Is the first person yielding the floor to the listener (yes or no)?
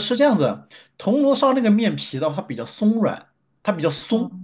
no